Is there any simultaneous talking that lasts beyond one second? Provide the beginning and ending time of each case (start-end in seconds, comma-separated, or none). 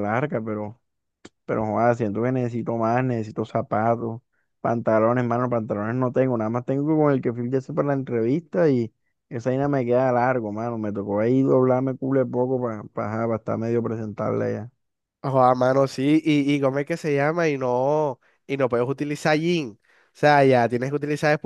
none